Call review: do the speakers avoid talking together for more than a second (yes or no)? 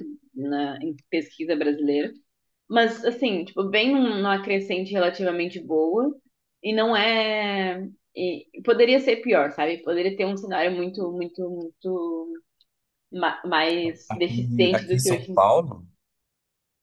no